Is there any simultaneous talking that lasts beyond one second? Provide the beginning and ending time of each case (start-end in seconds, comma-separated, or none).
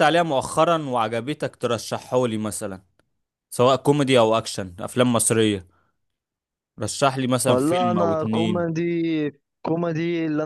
7.5-8.7